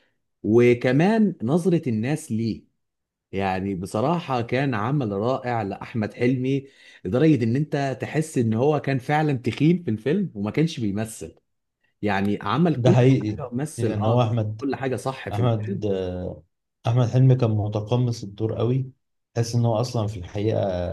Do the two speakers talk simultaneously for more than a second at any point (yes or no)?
yes